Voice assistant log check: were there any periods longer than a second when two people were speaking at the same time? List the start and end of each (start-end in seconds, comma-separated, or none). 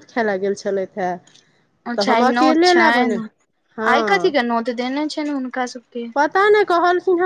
none